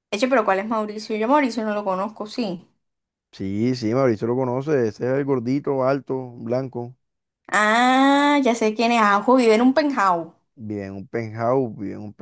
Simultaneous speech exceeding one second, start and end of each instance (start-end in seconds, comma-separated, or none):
none